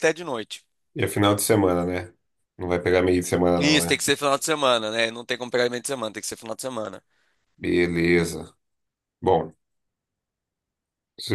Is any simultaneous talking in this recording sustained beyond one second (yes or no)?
no